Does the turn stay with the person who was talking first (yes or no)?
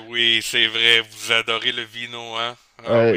no